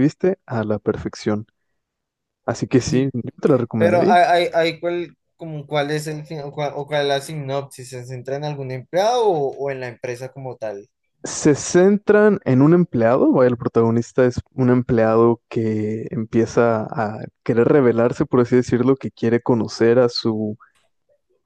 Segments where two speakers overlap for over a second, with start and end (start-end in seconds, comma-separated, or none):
none